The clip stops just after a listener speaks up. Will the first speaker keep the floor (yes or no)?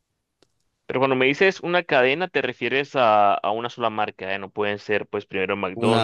no